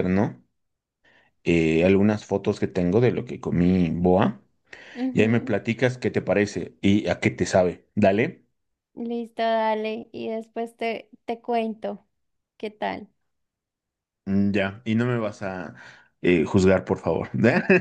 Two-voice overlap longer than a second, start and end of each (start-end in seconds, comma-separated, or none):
none